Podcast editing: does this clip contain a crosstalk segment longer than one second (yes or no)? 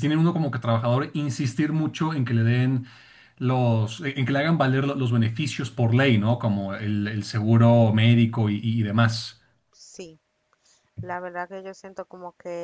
no